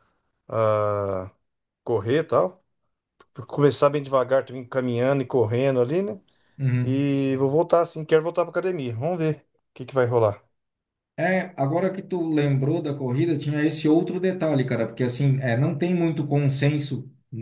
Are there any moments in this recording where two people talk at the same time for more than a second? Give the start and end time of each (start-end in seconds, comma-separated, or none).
none